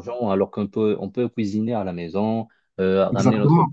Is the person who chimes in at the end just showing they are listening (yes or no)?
yes